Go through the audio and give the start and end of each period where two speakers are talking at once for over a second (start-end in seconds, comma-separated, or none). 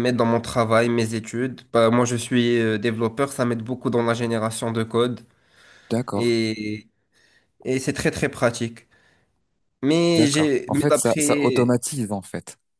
10.2-11.8